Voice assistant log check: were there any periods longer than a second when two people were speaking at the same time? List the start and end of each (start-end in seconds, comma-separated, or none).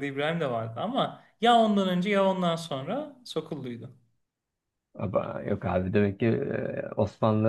none